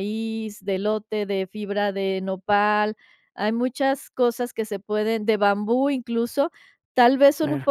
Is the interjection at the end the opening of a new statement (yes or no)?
no